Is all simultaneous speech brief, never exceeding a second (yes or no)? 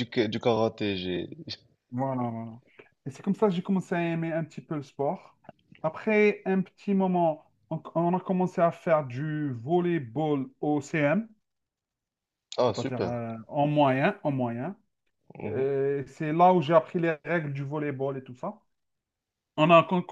yes